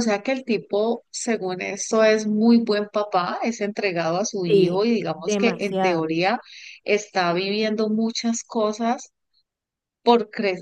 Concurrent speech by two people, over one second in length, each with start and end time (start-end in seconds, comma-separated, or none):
4.4-6.1